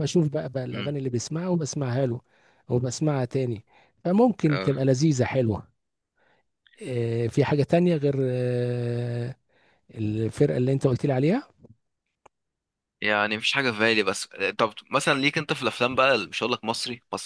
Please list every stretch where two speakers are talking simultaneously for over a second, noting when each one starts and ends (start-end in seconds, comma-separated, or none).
none